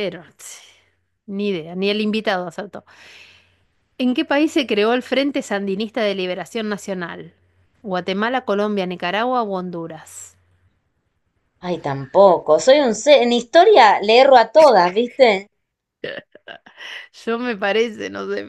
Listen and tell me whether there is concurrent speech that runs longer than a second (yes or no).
no